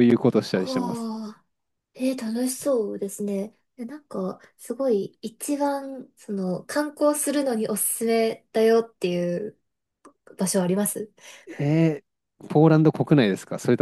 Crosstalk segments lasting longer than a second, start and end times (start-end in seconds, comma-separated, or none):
none